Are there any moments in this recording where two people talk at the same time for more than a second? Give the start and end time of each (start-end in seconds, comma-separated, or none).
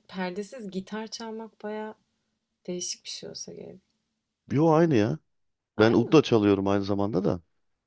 none